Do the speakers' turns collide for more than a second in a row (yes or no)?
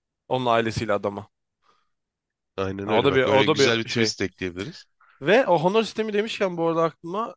yes